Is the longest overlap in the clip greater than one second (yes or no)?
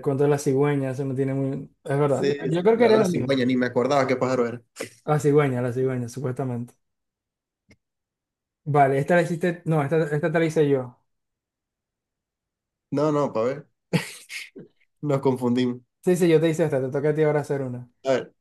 yes